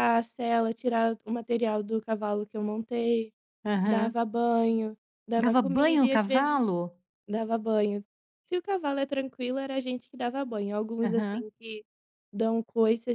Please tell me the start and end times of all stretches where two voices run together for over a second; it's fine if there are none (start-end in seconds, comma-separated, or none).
5.4-6.7